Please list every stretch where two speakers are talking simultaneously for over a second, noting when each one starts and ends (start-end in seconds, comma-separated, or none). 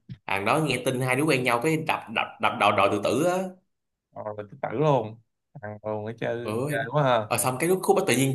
none